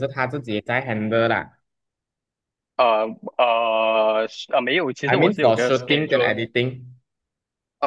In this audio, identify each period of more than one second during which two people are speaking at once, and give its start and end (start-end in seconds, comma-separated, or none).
5.1-6.3